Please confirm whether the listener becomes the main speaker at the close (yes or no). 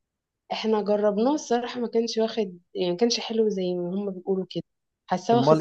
yes